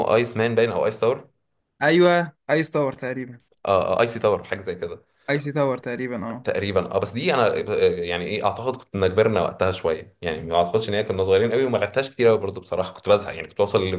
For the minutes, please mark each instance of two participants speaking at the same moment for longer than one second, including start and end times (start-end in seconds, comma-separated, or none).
none